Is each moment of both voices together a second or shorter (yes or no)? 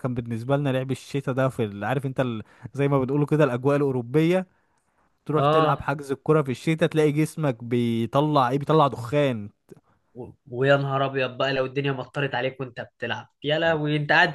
yes